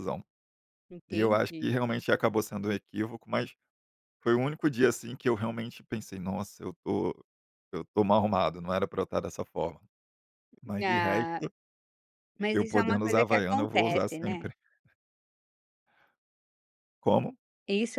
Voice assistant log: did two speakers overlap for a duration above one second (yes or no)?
yes